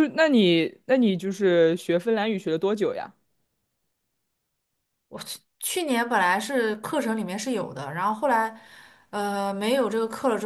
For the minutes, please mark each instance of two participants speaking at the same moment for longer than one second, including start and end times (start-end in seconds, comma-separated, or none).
none